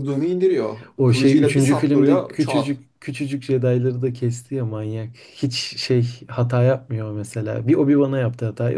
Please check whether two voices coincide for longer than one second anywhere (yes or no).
yes